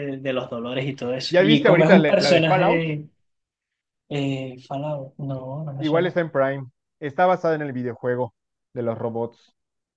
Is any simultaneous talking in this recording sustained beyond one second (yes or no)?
yes